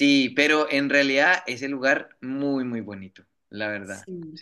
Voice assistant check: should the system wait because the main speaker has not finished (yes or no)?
no